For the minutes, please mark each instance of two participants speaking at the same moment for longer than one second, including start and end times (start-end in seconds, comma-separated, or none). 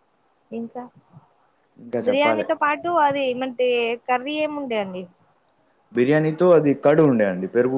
none